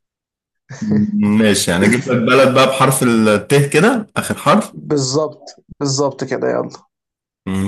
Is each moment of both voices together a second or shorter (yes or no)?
yes